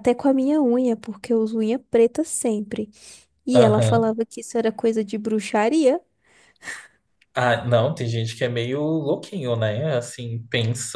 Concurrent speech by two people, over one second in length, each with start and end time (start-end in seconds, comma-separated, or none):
none